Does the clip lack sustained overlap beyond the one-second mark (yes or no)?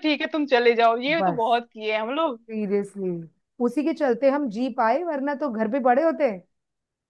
yes